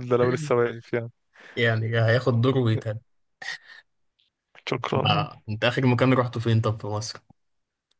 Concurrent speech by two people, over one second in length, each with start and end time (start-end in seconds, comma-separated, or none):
none